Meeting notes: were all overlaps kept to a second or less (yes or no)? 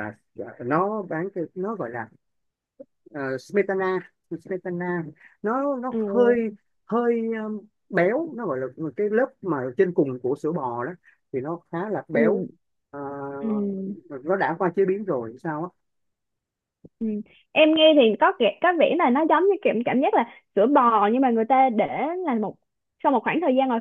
yes